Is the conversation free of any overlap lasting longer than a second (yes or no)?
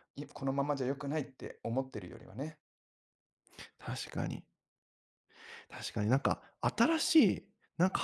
yes